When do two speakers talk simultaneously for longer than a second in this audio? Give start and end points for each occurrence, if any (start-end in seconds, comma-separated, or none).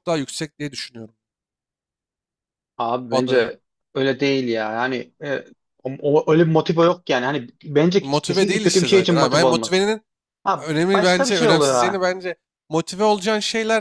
8.0-9.8, 10.6-12.1